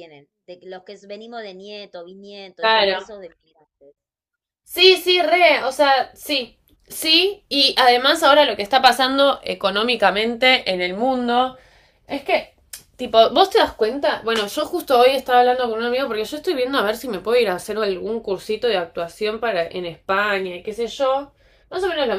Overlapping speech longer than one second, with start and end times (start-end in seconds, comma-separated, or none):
none